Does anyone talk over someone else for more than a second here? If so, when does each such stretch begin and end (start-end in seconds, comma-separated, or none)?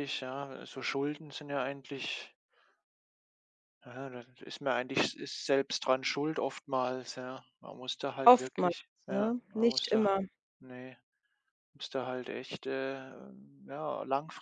8.2-10.1